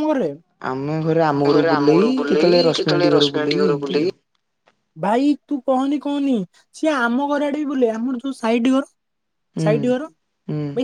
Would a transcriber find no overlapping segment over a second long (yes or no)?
no